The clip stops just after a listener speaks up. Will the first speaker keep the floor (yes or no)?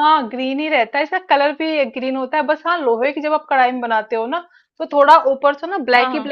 yes